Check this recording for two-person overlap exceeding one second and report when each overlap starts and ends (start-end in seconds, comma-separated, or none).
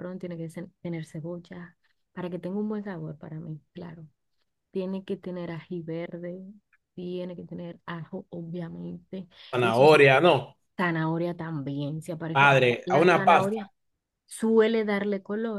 12.3-13.7